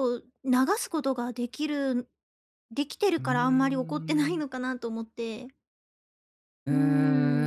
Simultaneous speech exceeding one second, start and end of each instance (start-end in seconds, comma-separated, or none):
3.2-4.6